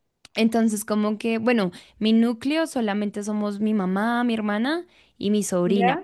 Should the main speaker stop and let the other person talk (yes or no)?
no